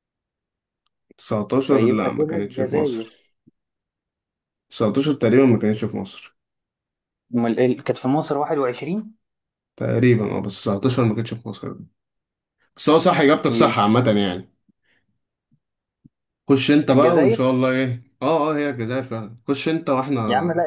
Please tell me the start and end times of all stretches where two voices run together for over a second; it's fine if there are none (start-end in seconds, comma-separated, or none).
1.6-3.1